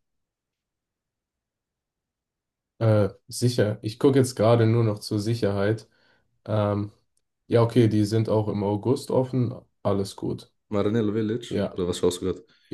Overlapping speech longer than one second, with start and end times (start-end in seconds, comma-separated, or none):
none